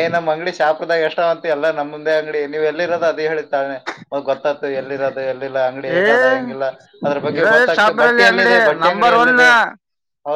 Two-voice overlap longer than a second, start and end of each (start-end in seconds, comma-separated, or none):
7.3-9.3